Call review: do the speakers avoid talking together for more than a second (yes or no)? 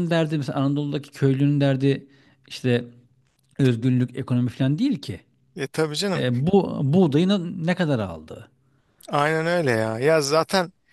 yes